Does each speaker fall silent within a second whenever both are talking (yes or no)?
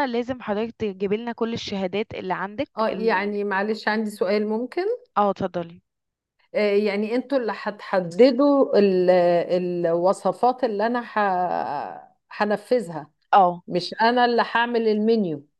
yes